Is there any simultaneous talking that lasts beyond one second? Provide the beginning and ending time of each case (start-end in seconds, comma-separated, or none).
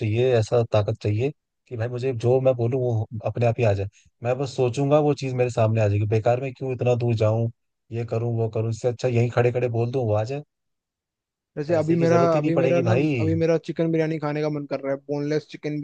11.7-13.1